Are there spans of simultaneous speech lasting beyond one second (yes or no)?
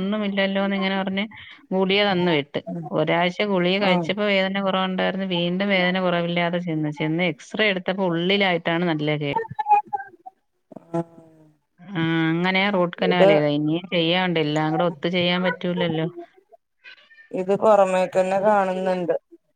no